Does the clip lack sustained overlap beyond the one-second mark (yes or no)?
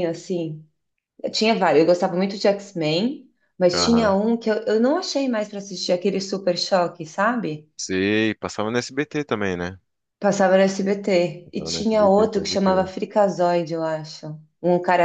no